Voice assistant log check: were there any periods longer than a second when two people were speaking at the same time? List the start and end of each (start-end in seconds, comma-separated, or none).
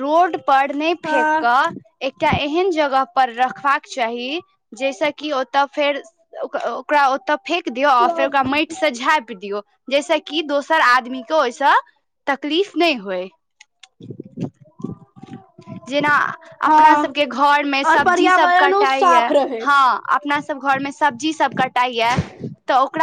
17.9-19.6